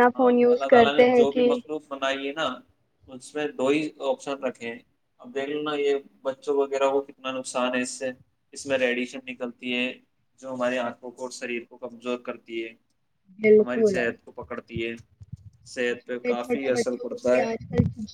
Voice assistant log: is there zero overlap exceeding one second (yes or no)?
no